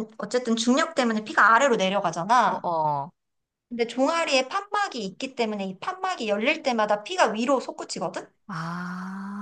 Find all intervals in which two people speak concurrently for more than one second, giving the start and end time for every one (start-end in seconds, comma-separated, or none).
none